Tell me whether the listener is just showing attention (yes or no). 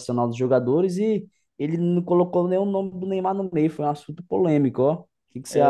no